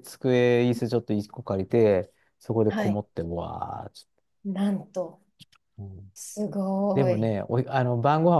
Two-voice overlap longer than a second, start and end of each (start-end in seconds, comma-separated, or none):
none